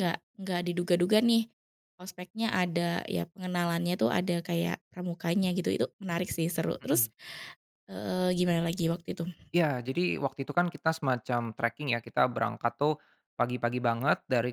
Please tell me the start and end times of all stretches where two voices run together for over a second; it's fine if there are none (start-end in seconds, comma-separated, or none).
none